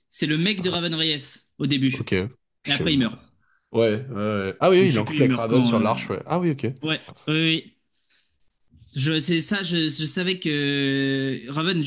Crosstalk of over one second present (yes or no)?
yes